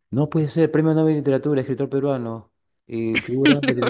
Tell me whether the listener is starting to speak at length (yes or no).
no